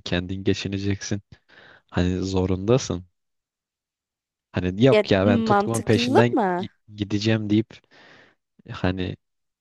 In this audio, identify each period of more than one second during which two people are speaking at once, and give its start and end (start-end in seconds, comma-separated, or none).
4.9-6.7